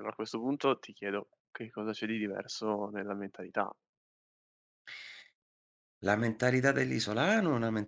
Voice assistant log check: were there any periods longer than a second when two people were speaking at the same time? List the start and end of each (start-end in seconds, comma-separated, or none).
none